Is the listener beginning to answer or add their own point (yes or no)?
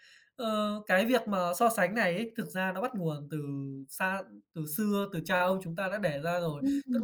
no